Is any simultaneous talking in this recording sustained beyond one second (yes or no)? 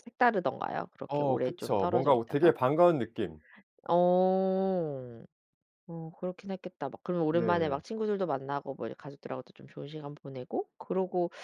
yes